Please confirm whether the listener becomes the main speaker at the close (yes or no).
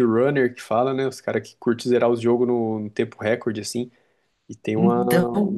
no